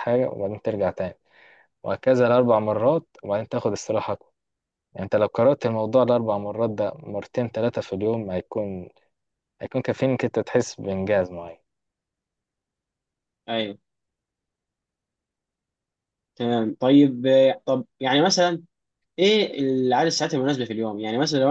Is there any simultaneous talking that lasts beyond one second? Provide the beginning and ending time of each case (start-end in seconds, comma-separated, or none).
none